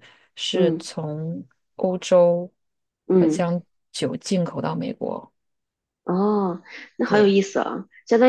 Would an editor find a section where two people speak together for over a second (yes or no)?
no